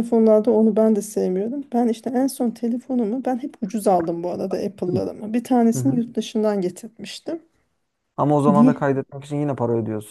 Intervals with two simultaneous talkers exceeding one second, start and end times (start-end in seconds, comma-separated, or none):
none